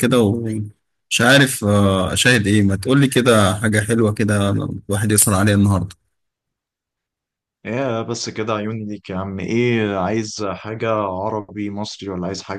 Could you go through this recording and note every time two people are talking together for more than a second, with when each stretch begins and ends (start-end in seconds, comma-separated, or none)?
none